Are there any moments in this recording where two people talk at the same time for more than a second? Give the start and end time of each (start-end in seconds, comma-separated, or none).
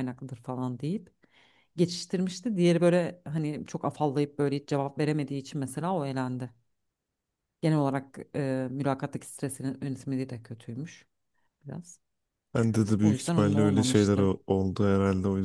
13.0-14.3